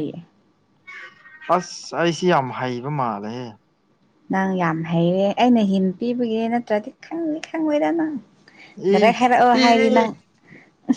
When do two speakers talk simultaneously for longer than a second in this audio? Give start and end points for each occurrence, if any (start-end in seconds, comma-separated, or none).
none